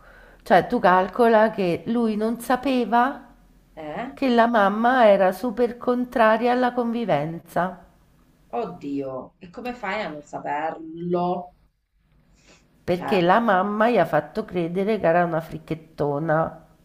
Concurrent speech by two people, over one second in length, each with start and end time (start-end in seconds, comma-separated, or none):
none